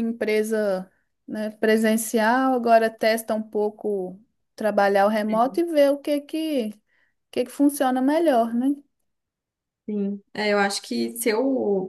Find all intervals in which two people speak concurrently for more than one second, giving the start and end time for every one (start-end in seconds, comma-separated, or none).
none